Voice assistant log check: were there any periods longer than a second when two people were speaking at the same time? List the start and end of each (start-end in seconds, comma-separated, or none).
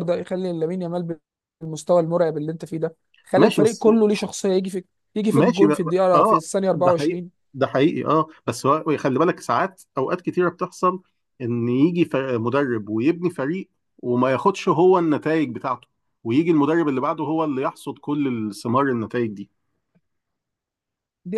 5.3-7.3